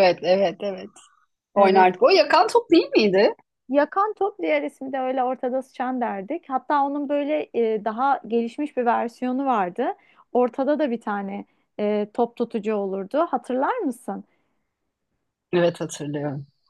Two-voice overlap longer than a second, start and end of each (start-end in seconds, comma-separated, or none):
none